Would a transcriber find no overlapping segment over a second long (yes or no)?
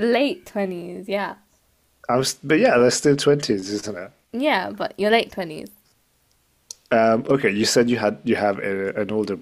yes